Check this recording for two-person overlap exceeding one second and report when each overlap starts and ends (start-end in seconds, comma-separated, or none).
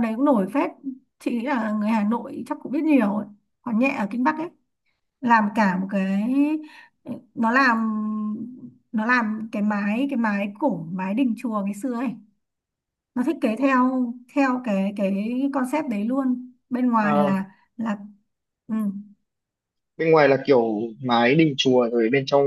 none